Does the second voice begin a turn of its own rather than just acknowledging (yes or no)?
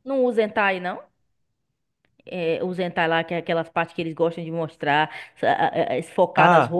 yes